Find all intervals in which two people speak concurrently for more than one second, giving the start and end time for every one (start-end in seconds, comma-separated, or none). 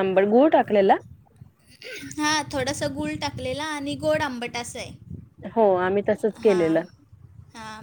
none